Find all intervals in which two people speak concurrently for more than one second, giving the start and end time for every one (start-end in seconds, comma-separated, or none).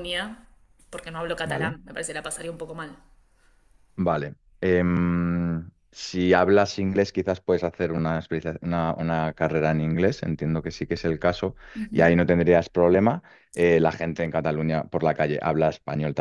none